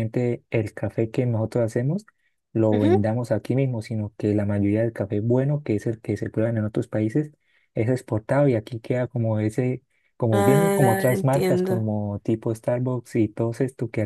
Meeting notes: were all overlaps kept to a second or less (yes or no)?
no